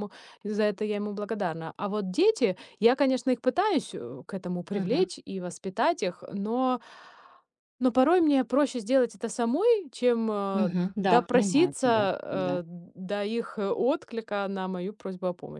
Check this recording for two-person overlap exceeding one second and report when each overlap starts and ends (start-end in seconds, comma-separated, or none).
10.5-12.6